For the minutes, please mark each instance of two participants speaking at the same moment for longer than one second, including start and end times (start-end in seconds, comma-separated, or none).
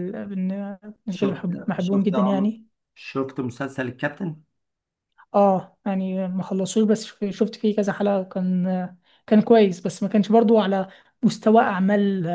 1.1-2.5